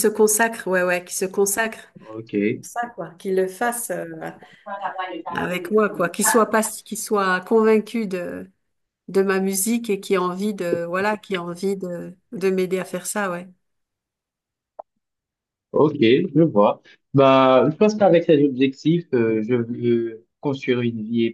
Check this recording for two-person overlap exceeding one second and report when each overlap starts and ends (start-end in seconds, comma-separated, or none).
none